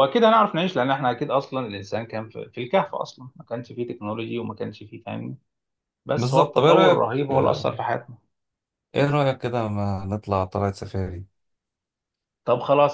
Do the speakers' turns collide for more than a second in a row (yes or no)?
yes